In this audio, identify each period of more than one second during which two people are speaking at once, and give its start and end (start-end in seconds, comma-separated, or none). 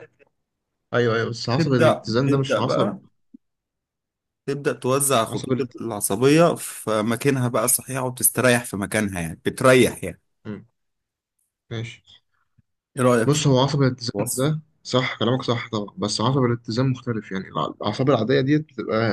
1.6-2.9